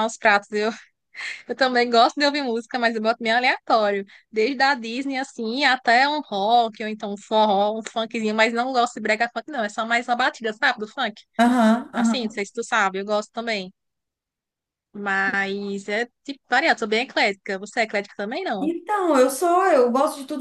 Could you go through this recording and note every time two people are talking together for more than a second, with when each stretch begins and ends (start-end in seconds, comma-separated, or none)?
none